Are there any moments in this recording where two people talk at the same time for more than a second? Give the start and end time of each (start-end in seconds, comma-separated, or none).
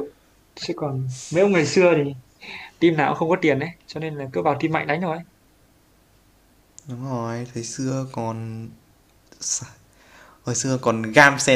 none